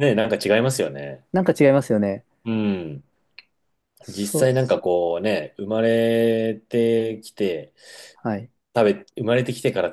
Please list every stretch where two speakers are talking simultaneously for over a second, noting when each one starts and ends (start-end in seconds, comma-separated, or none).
none